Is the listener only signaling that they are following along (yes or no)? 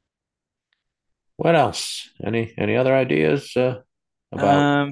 yes